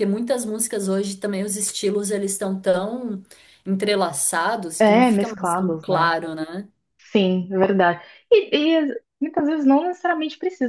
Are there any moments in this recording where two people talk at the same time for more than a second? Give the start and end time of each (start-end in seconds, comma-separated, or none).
4.8-6.2